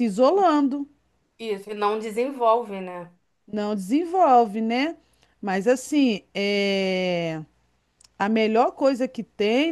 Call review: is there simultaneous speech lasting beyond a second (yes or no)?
no